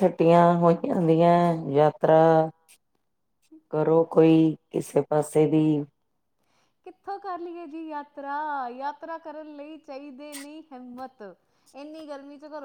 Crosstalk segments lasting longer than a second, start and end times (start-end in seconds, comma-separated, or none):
none